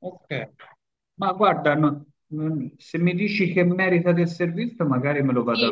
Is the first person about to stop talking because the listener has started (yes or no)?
yes